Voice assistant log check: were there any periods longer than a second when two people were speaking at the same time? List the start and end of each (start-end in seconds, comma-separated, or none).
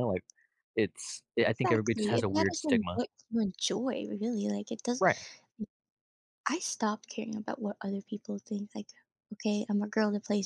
1.5-3.0